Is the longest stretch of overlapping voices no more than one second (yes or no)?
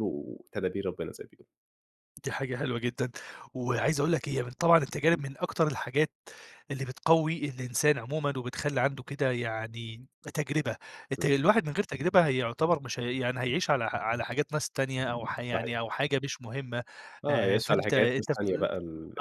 no